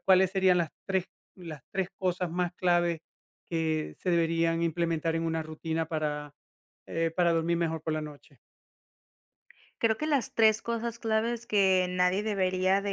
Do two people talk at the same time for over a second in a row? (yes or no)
no